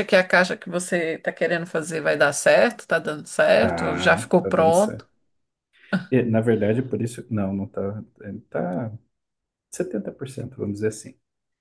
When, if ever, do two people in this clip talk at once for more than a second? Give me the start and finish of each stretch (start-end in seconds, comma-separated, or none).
3.6-5.1